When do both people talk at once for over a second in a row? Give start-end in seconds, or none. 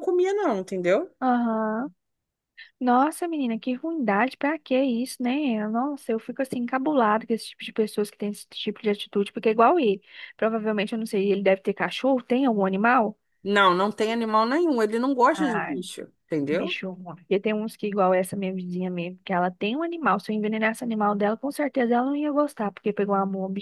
none